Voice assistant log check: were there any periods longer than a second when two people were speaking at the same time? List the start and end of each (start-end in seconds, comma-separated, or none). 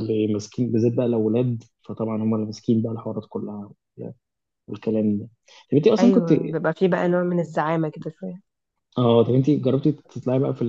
none